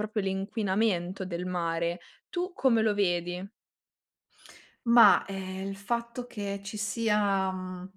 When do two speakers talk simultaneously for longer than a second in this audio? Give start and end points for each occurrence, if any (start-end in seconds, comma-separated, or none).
none